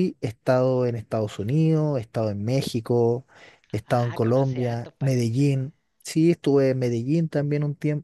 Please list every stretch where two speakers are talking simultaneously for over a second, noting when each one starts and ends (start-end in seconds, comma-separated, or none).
3.9-5.5